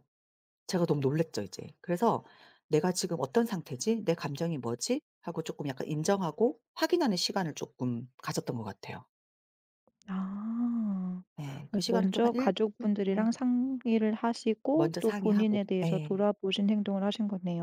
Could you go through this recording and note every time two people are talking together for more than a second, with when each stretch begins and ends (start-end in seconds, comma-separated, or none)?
11.7-13.3, 14.7-16.2